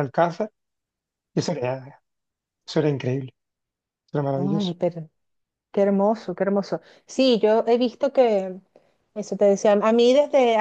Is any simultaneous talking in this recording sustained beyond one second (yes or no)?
no